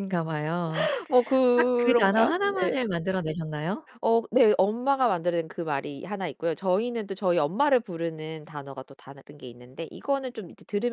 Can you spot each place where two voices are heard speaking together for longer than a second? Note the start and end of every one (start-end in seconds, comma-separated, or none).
1.6-2.8